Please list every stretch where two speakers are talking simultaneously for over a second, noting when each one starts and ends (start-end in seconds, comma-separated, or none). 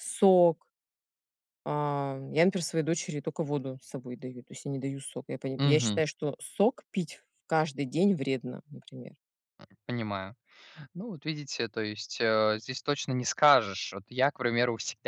none